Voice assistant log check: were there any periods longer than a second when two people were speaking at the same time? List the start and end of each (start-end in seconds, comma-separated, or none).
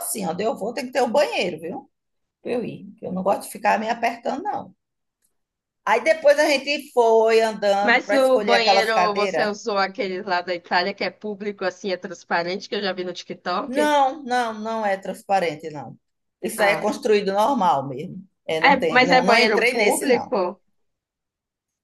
7.8-9.5, 18.6-20.3